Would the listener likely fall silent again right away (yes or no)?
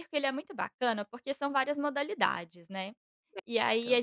yes